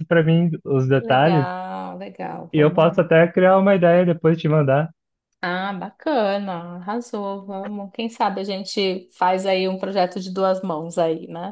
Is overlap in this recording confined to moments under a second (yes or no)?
yes